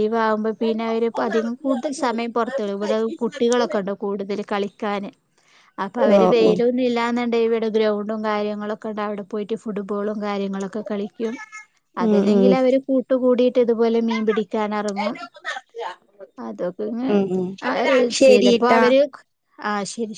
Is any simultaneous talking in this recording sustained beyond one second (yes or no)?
no